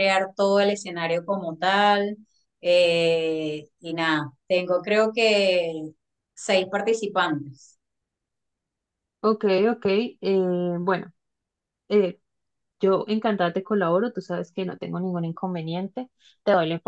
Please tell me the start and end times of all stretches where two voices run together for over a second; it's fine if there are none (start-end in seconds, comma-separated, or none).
none